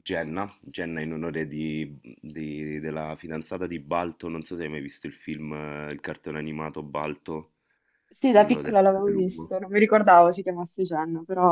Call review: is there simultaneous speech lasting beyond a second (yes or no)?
yes